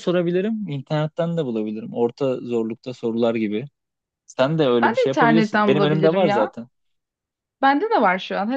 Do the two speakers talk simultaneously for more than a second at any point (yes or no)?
yes